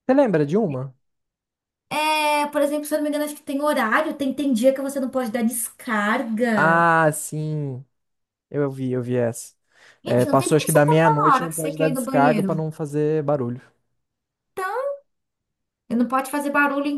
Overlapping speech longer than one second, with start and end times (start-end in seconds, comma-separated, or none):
10.1-12.6